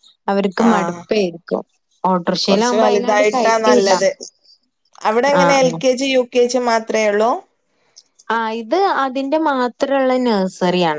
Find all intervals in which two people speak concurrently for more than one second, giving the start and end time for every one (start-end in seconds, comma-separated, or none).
2.5-4.1